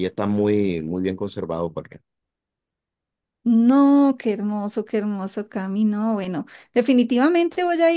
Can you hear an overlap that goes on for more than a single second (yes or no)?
no